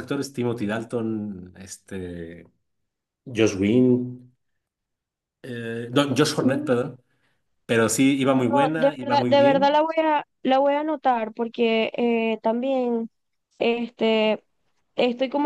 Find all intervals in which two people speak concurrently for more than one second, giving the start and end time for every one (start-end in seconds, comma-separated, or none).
8.3-9.8